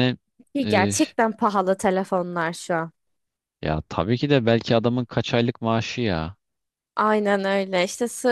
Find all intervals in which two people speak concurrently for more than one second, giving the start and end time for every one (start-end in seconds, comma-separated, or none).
none